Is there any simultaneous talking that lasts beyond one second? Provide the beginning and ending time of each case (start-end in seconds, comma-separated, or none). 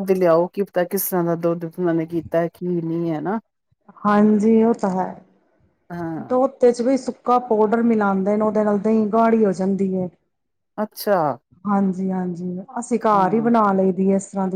none